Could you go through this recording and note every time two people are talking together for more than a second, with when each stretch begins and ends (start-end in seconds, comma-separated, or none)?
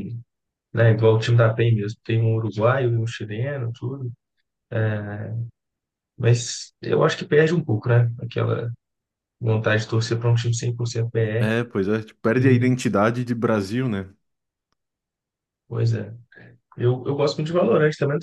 11.4-12.7